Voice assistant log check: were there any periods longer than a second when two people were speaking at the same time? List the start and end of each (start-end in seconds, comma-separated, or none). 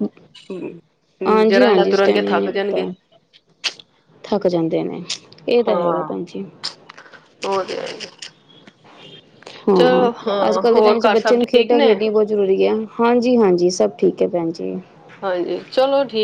1.5-2.9